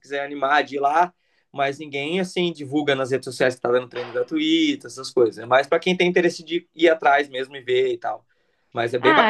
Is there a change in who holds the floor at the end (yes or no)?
yes